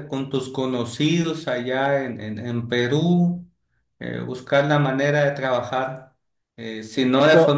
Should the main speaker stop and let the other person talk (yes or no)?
no